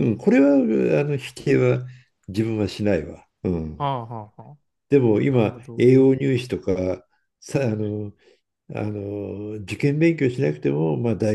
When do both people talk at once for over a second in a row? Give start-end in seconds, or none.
none